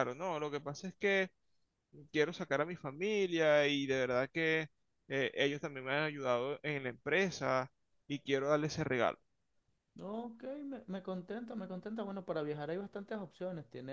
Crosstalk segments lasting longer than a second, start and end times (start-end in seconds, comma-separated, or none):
none